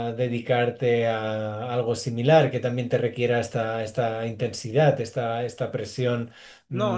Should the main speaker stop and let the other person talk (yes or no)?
yes